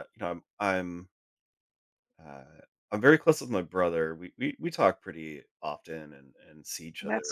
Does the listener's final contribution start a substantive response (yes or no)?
no